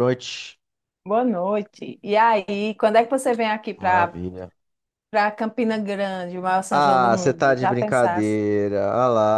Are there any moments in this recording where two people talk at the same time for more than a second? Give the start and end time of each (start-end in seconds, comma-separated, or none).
6.8-8.3